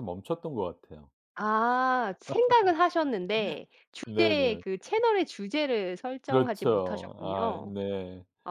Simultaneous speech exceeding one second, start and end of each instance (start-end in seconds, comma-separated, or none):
6.3-7.7